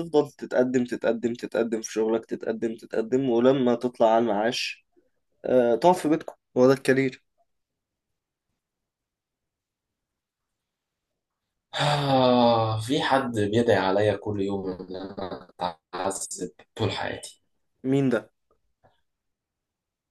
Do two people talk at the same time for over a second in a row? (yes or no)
no